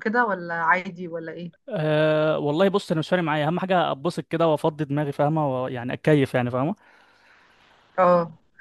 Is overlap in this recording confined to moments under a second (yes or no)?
yes